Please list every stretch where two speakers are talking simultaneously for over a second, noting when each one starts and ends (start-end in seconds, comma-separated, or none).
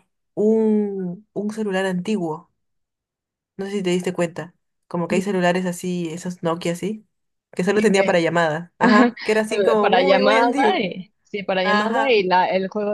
9.5-10.9